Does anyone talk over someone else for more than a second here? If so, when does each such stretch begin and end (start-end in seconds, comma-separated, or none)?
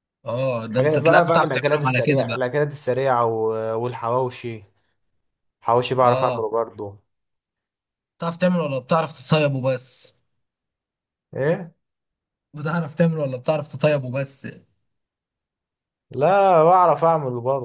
0.7-2.4